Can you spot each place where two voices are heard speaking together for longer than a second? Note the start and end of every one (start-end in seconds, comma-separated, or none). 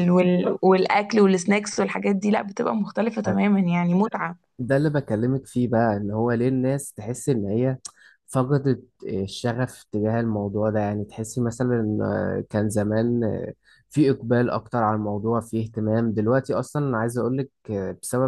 none